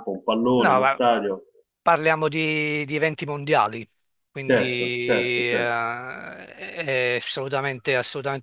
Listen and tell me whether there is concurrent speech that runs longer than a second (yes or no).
yes